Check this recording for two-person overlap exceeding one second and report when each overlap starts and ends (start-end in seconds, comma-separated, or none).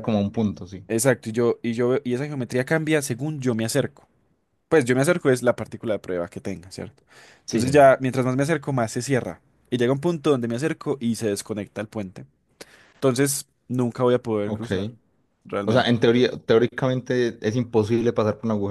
none